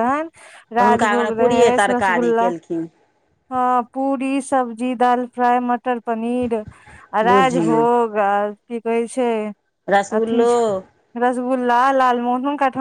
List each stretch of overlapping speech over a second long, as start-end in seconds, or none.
0.8-2.5